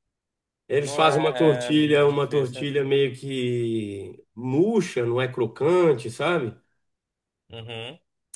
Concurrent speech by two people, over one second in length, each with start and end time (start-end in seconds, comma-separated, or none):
0.8-2.7